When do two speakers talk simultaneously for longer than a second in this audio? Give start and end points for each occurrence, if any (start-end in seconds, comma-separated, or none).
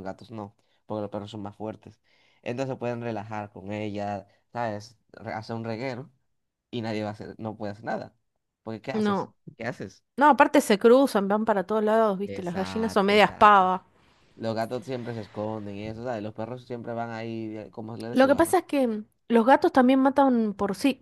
12.2-13.7